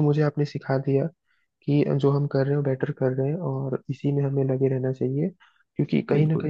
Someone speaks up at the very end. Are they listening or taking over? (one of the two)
listening